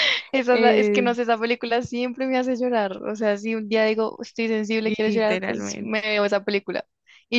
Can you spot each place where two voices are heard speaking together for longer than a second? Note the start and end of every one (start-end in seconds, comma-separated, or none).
4.8-6.1